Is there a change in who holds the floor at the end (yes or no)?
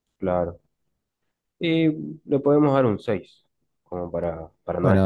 yes